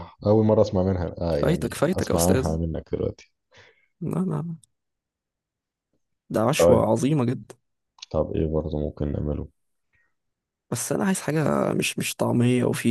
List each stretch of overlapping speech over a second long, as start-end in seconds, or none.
1.3-2.6